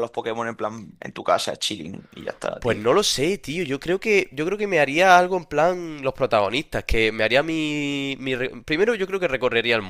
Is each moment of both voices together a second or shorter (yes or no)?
yes